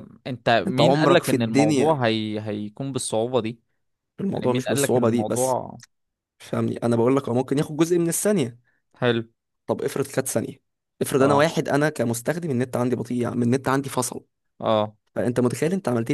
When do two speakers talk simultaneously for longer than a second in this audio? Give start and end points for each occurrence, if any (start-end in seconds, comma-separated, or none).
0.7-2.0, 4.3-5.6